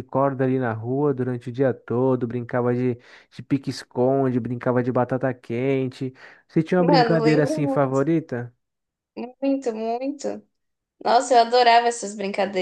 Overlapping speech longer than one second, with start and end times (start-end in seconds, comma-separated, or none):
6.8-8.0